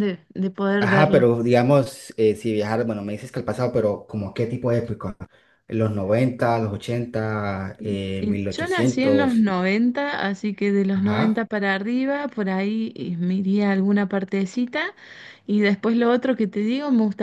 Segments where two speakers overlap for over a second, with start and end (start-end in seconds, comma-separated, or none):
7.8-9.5